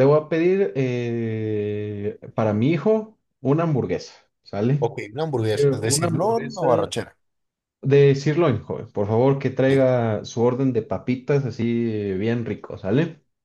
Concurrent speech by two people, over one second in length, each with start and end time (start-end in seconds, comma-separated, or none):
5.5-6.9